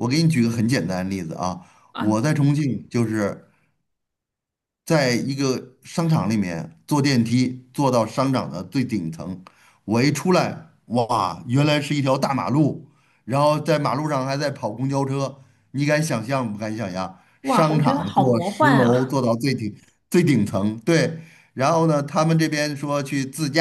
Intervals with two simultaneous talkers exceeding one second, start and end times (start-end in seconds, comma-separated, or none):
17.4-19.2